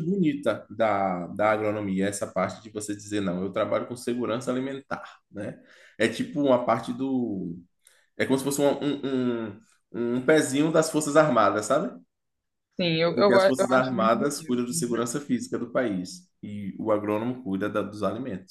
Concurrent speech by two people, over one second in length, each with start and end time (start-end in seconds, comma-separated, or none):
13.1-14.6